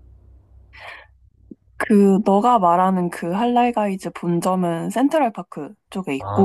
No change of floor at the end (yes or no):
no